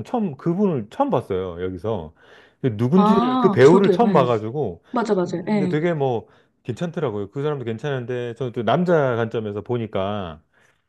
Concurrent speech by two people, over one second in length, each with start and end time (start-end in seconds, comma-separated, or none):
3.0-4.2